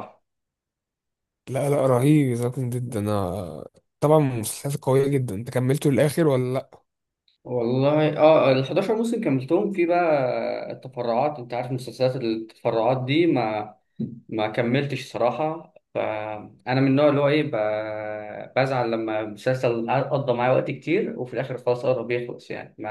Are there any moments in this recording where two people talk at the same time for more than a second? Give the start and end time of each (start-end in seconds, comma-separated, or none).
none